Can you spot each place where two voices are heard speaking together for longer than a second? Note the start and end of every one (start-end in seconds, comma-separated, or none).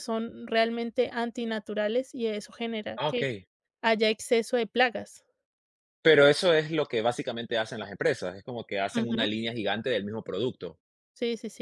none